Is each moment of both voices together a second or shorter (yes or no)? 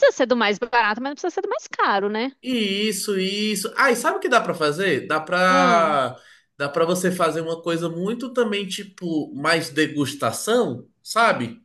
yes